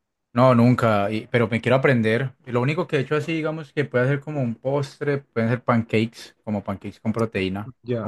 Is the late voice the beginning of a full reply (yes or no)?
yes